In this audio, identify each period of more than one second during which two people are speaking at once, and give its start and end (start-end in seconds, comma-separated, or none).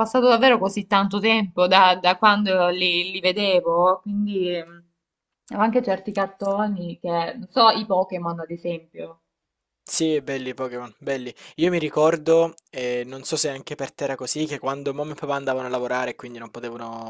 none